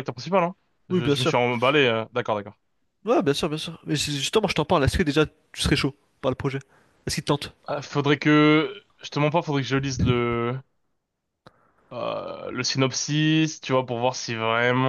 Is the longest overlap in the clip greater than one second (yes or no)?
no